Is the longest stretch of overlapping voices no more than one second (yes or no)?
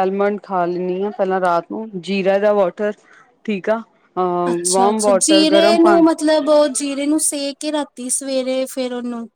no